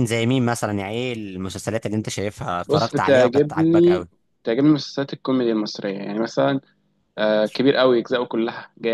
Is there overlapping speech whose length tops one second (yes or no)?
yes